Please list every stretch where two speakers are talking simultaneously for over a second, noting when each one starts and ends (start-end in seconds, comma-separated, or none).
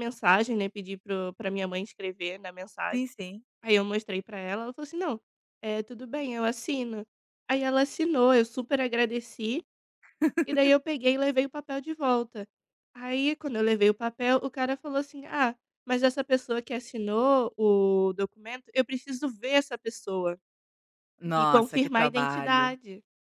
21.3-22.8